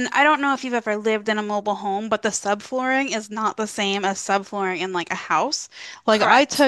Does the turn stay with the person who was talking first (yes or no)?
yes